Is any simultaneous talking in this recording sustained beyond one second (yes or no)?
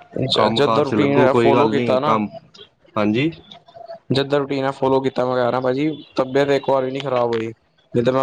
yes